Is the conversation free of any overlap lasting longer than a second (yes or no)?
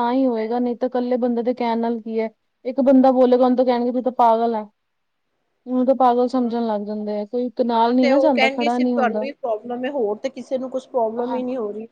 no